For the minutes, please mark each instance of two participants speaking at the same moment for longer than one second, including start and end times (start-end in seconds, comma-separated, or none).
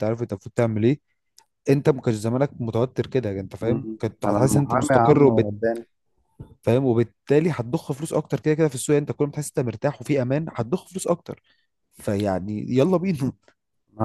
3.6-5.5